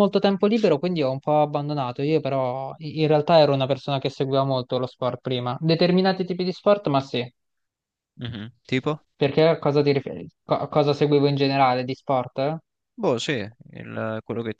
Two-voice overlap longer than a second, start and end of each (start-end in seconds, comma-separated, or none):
none